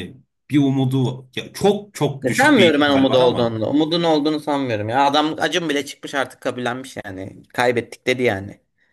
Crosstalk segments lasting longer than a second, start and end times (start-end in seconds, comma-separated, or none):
2.2-3.6